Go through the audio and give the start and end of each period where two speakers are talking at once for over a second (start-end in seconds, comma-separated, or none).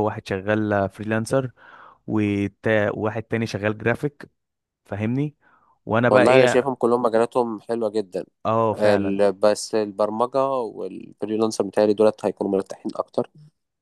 none